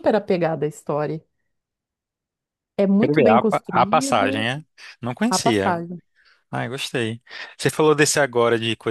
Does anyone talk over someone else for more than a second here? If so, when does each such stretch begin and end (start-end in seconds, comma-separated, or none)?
3.0-4.5